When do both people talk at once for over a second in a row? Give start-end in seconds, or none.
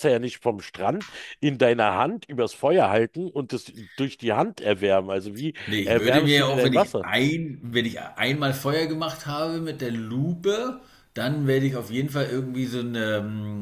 5.7-7.0